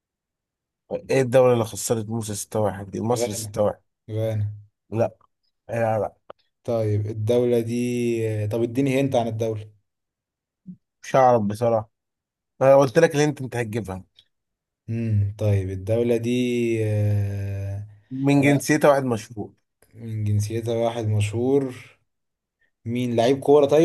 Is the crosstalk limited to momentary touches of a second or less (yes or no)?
yes